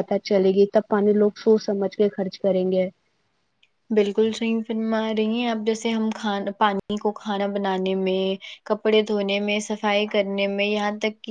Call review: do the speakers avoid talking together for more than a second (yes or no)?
yes